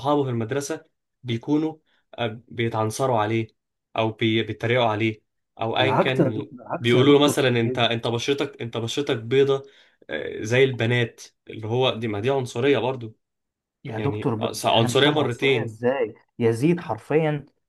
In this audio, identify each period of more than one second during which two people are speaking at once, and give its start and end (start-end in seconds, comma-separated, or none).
5.8-7.9, 14.0-15.7